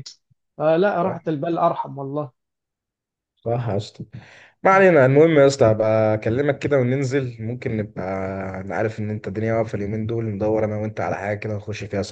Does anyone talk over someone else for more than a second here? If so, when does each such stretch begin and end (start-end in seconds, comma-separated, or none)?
none